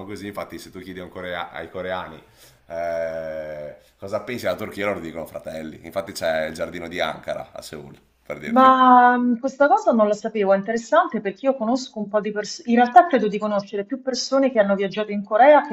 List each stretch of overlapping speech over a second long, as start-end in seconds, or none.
none